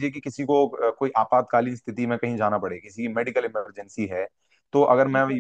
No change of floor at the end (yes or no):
yes